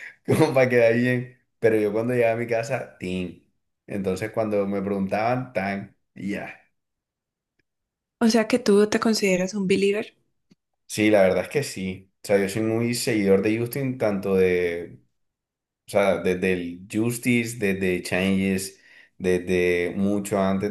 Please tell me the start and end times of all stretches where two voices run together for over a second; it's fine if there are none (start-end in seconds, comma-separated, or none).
none